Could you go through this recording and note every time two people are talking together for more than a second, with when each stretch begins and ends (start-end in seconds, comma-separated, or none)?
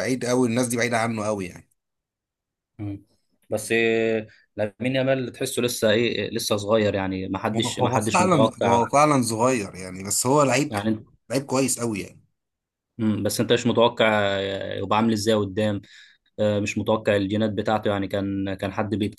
7.5-8.9